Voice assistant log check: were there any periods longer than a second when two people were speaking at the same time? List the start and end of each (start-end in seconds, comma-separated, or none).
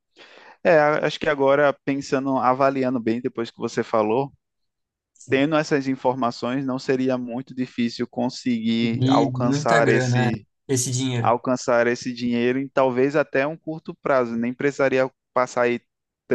8.8-10.3